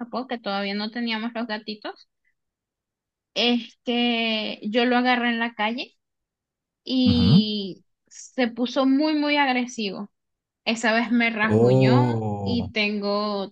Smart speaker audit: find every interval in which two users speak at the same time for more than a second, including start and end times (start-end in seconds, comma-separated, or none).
11.4-12.7